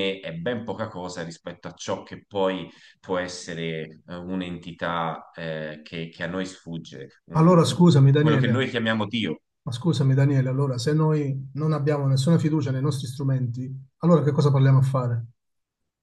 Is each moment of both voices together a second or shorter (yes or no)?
no